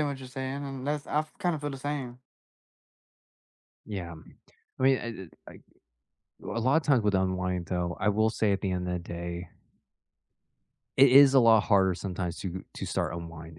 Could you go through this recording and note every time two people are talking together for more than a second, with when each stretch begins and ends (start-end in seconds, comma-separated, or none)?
none